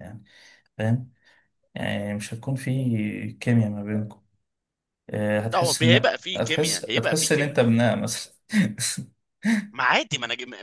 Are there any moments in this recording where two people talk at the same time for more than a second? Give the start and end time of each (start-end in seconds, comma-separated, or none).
5.5-7.6